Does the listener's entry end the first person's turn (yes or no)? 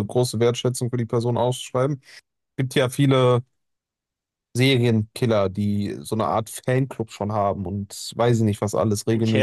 yes